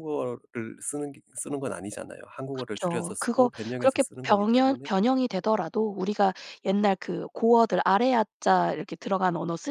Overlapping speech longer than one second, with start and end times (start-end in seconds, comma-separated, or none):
2.5-4.9